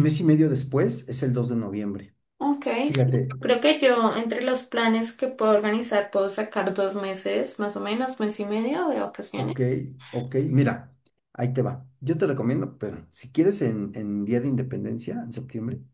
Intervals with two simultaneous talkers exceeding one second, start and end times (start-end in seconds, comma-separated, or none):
none